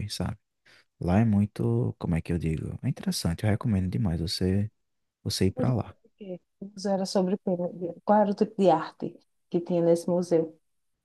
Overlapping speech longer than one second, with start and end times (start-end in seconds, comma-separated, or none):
none